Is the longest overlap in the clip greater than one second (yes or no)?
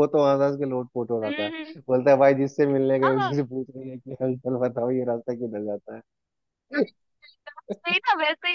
no